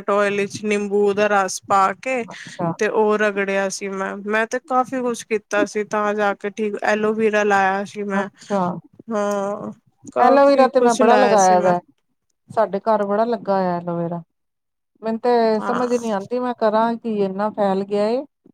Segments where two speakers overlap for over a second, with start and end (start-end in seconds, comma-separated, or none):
10.2-11.7